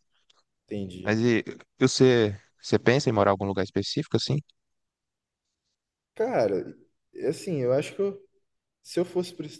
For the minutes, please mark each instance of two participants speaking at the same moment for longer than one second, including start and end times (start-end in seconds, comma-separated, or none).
none